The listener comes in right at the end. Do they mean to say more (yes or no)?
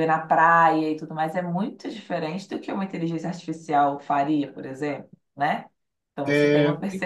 no